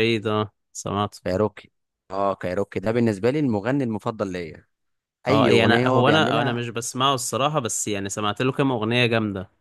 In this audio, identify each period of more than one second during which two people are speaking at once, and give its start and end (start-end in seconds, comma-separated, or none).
5.3-6.6